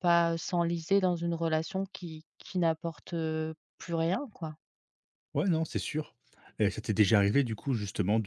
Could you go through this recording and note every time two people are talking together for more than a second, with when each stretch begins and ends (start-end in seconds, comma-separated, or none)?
none